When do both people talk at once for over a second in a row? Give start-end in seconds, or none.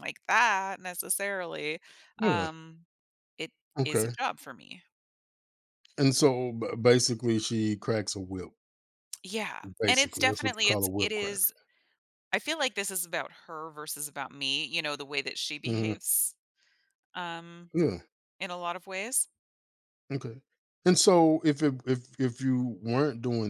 9.8-11.4